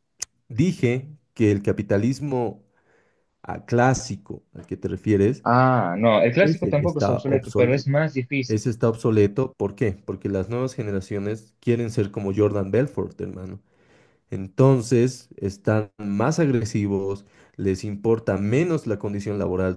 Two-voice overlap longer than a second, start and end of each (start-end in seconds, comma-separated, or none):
6.4-7.8